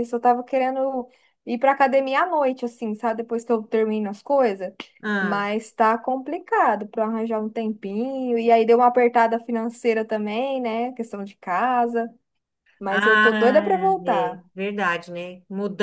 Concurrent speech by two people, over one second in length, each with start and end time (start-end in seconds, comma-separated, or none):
12.9-14.4